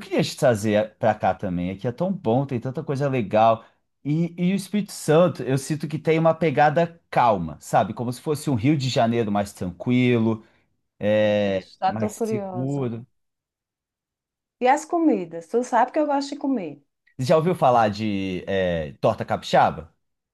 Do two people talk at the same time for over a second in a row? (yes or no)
yes